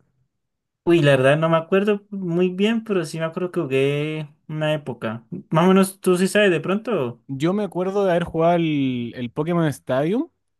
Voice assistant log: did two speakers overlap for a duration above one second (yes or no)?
no